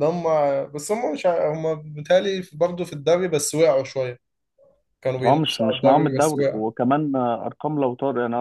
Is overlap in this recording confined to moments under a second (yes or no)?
no